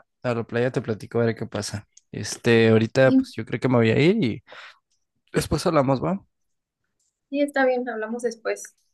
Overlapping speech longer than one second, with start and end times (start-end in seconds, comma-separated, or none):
none